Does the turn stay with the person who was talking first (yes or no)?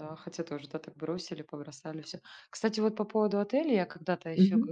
yes